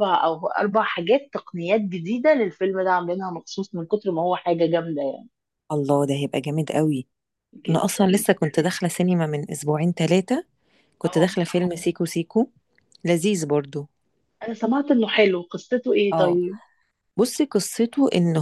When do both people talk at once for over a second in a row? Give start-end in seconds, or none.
none